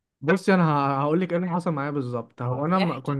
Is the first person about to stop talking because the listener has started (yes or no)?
no